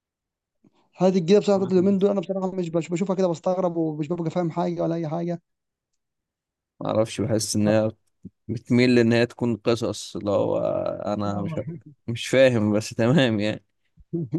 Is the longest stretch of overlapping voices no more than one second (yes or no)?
yes